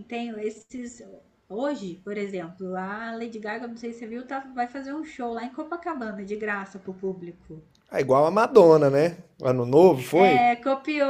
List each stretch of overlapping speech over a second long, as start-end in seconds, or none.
none